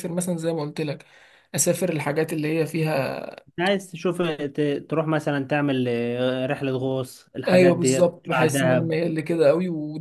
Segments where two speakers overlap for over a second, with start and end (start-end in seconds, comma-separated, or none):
7.5-8.9